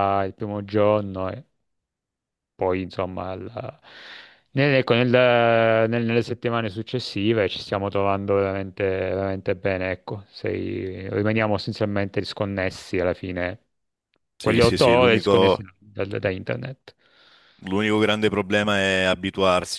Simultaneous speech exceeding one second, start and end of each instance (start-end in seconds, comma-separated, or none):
14.4-15.6